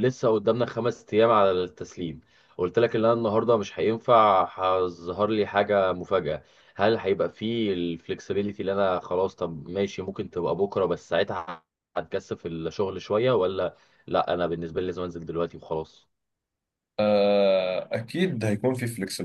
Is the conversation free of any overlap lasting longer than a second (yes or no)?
yes